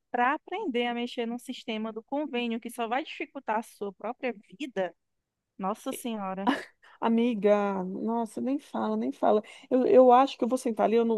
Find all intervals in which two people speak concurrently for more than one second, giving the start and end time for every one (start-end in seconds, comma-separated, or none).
none